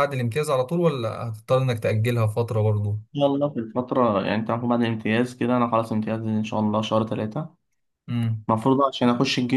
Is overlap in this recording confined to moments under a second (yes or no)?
yes